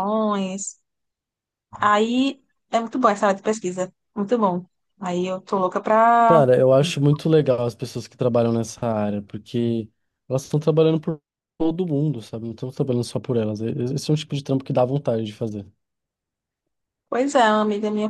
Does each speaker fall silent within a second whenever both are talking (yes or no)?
yes